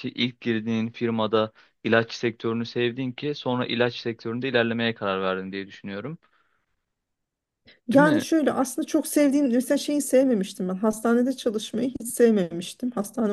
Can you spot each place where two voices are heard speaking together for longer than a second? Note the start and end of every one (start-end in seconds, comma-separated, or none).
none